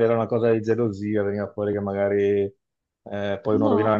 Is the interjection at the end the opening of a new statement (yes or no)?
no